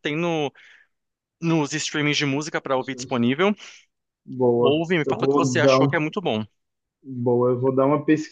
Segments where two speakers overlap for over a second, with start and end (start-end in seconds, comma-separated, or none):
4.6-6.0